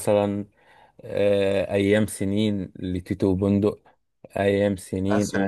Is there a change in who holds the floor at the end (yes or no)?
no